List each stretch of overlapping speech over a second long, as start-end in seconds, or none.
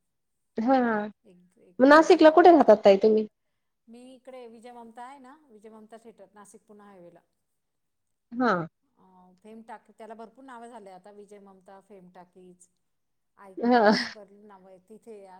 1.3-2.7